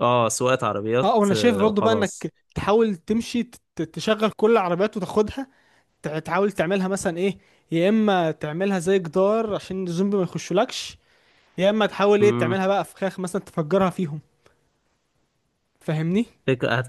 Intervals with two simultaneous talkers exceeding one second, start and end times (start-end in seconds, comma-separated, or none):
1.0-2.3